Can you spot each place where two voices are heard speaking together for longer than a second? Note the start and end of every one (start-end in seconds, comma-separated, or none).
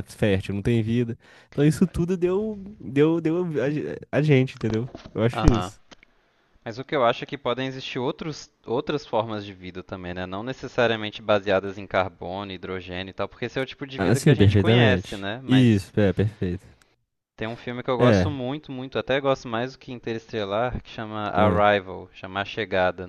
14.0-15.9